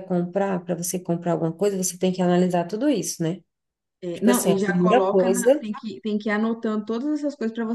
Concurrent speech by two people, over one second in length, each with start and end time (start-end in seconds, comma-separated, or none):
4.1-5.6